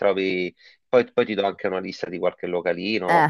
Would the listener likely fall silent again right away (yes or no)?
yes